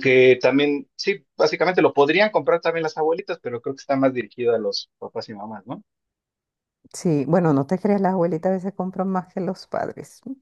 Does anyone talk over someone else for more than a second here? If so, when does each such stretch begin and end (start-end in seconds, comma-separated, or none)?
none